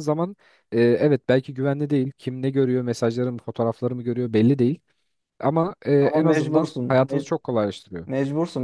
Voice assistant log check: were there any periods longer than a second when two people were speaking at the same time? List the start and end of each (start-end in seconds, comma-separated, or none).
6.0-7.4